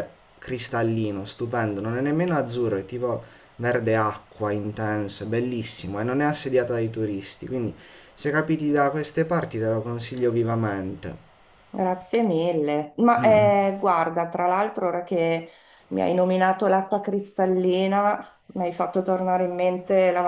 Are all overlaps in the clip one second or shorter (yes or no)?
yes